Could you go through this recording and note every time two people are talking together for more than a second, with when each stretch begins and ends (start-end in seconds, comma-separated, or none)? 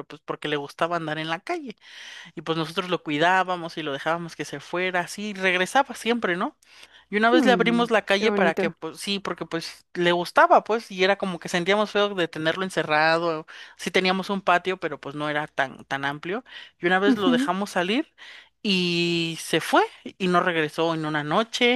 7.3-8.8